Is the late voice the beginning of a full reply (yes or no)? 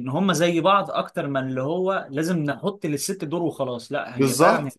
yes